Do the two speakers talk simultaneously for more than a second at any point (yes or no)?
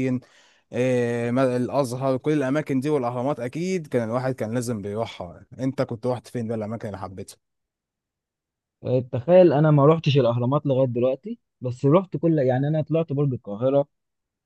no